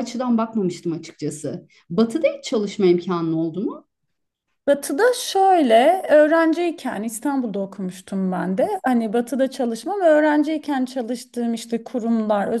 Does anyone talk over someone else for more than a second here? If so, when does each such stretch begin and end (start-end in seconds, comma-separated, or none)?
none